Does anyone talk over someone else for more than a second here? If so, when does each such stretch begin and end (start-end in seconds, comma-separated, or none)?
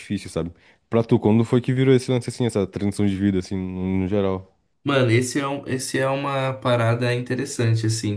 none